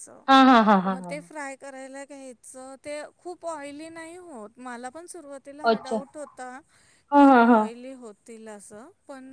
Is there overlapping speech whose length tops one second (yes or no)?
no